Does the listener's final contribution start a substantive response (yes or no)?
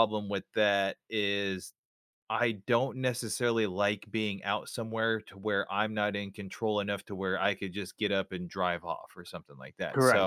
yes